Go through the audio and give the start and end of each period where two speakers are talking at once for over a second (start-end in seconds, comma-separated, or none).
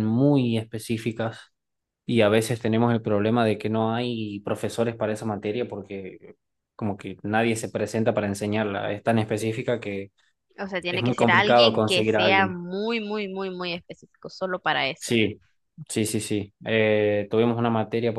10.9-12.6